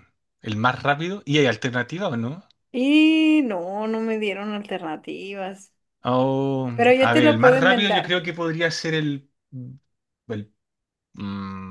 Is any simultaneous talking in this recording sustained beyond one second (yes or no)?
yes